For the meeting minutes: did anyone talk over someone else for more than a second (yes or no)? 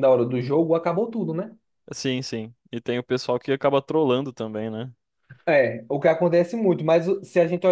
no